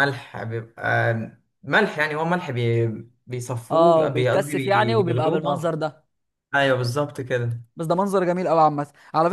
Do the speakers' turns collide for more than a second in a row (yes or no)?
yes